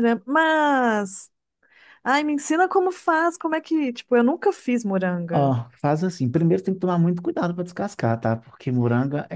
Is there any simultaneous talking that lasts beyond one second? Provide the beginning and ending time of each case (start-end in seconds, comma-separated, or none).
none